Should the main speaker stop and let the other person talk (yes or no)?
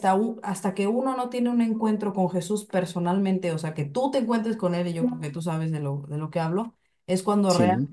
no